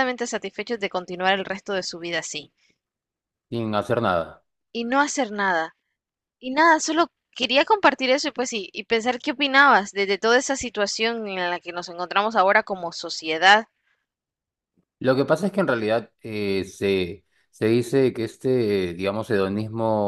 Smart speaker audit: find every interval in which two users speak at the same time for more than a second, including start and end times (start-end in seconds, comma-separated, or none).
none